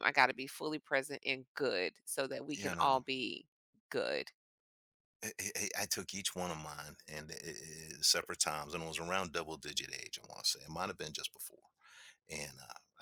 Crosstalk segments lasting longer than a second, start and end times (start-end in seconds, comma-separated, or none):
none